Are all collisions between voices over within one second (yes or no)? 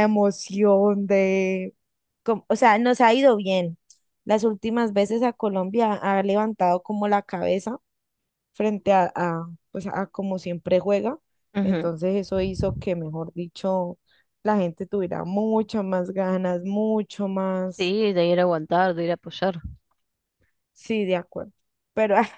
yes